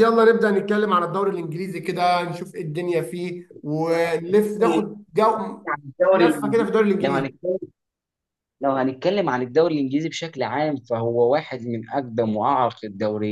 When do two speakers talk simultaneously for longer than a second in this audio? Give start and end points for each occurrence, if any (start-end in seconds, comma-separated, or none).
none